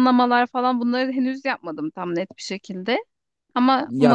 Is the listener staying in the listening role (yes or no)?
yes